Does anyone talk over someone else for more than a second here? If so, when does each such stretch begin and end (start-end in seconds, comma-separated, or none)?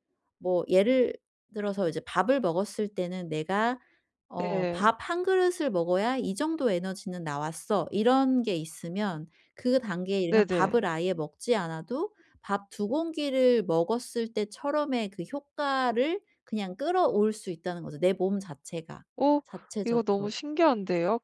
none